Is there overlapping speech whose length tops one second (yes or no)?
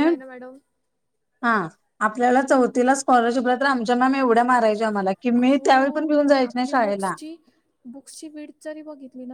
yes